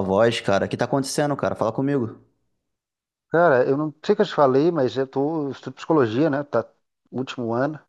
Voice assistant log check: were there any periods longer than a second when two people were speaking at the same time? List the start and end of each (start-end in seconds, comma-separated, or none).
none